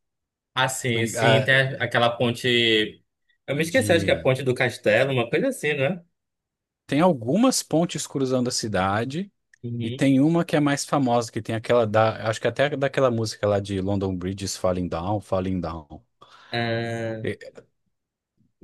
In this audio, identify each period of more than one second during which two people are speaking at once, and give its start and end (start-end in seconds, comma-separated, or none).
none